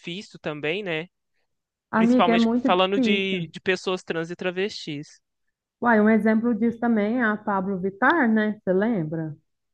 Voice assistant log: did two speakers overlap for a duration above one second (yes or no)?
yes